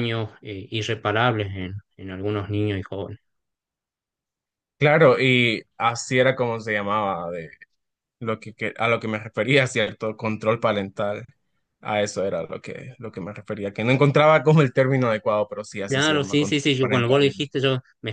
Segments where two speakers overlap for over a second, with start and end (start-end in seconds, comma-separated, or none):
15.9-17.5